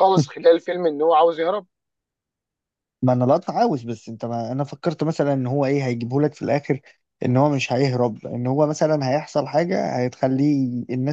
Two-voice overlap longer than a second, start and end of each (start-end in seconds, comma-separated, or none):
none